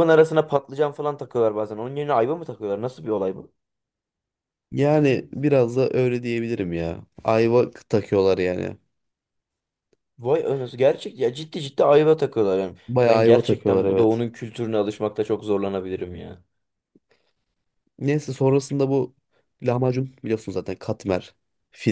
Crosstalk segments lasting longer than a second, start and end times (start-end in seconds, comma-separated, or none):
12.9-14.3